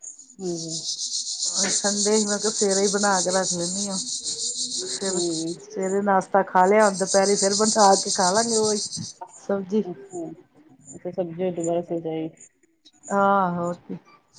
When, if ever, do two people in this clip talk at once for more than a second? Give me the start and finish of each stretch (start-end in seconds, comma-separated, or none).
none